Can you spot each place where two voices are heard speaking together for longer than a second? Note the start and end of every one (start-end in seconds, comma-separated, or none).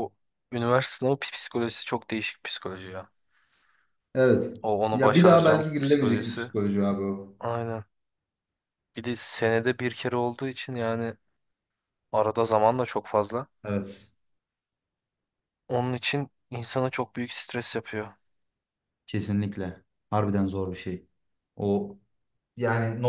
4.9-6.5